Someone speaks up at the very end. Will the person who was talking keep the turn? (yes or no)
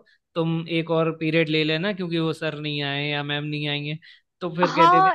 no